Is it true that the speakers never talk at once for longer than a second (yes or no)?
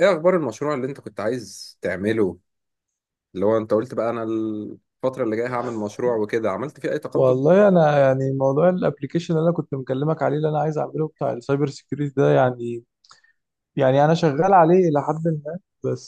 yes